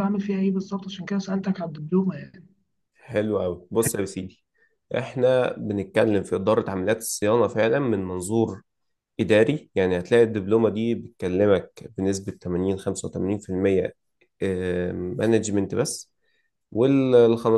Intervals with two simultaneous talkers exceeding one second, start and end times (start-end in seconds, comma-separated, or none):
none